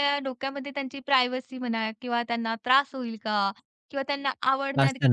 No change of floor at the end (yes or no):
yes